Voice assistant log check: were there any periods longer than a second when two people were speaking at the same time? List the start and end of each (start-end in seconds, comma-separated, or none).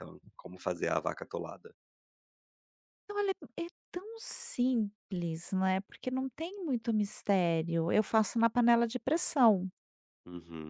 none